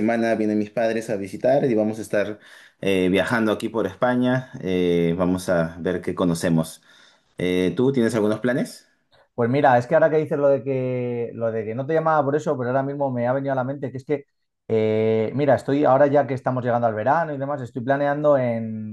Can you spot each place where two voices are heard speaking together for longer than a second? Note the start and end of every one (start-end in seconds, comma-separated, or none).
none